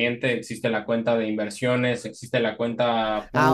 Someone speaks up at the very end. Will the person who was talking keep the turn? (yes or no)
no